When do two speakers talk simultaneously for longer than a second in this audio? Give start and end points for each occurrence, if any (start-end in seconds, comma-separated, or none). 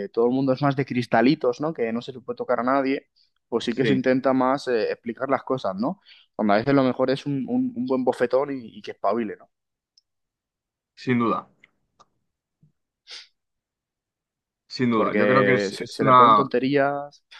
14.9-16.4